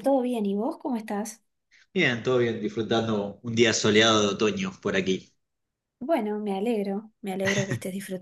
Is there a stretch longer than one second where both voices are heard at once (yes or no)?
no